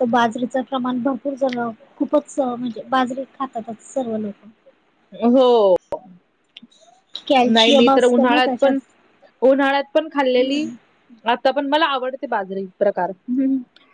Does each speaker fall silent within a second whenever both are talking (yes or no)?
no